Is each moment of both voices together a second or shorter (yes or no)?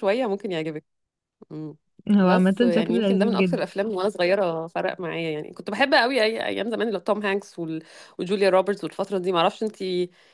no